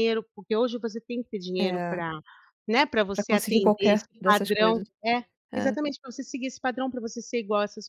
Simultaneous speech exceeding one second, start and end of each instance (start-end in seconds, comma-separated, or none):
3.1-4.9